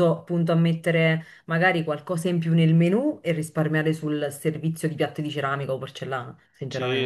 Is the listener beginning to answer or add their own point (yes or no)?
yes